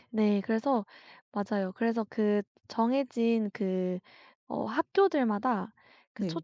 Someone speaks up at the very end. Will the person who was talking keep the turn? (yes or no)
yes